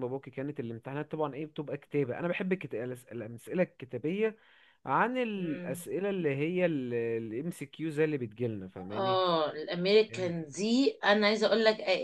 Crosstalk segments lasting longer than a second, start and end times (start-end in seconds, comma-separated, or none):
none